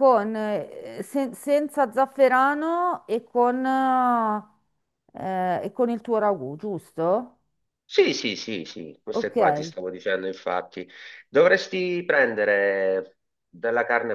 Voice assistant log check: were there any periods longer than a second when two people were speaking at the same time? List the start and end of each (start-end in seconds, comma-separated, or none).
none